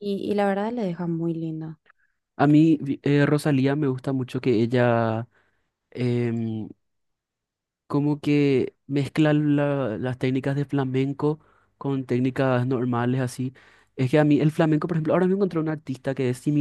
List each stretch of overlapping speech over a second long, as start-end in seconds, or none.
none